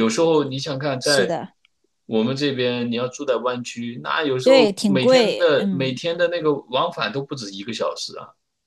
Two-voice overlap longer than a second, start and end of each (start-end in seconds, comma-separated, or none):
4.4-6.0